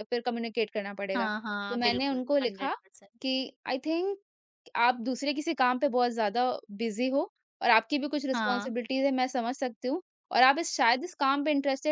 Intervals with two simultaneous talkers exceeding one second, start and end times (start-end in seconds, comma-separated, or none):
1.1-2.7